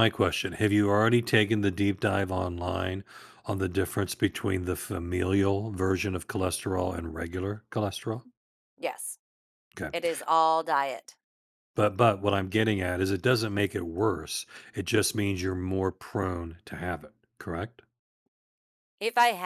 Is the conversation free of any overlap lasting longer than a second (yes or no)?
yes